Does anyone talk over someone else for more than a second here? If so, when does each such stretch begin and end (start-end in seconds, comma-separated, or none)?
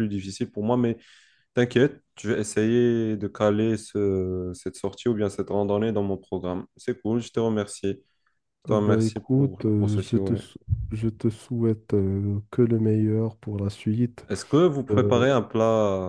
8.7-10.4